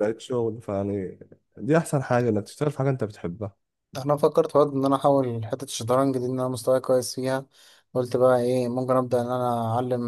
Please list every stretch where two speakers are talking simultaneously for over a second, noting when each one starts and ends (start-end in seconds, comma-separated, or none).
none